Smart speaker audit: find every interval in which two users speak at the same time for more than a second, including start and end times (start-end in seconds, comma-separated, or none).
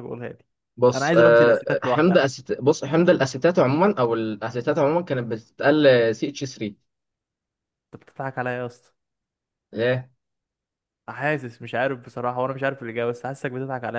0.9-2.2